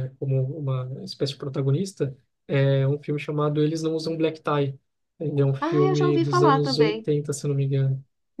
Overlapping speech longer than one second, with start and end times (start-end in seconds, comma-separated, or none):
5.6-7.1